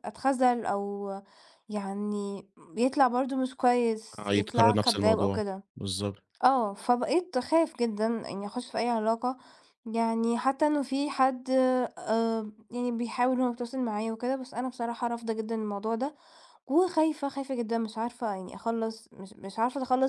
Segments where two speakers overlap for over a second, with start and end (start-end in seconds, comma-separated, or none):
4.2-5.6